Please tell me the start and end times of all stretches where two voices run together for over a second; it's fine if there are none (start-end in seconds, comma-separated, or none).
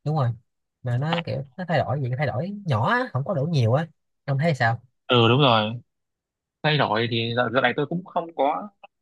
none